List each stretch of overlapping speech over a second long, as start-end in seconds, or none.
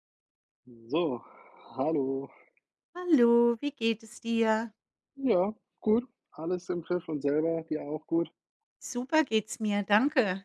none